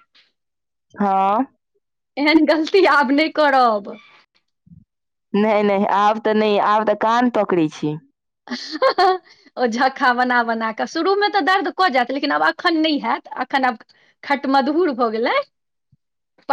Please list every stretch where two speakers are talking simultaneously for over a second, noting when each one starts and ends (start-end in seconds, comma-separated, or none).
none